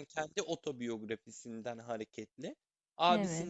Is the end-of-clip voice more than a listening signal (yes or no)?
no